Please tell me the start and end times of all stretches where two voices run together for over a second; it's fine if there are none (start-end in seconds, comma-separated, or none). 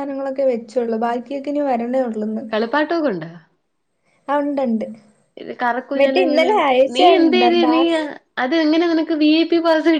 6.0-8.0